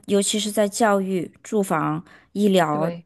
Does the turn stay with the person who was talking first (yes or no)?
yes